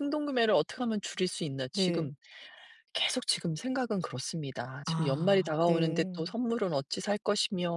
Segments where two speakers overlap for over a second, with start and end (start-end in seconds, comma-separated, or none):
4.9-6.3